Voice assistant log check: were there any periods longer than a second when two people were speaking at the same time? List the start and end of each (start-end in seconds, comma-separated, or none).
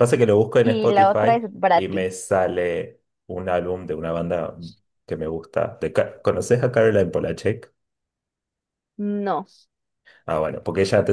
0.6-2.1